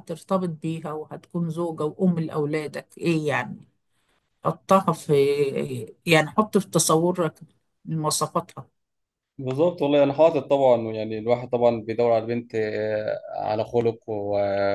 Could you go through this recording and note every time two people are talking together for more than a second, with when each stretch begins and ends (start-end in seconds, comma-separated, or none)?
none